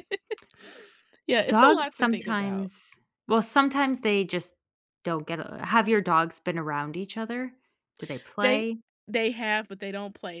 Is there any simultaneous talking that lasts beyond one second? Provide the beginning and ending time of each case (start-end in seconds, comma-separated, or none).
1.5-2.7